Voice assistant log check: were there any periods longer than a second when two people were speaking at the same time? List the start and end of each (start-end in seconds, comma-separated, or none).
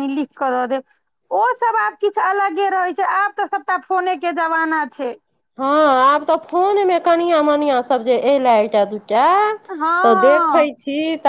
none